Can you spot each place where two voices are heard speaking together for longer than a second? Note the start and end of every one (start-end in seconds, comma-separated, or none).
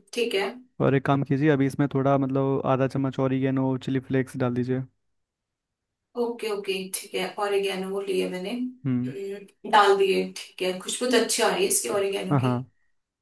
none